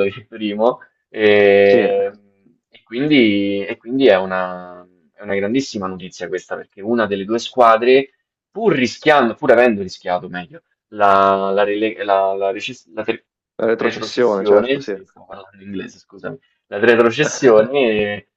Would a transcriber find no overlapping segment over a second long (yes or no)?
no